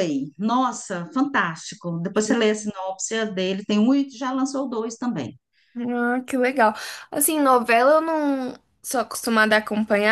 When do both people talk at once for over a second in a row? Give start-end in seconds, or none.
none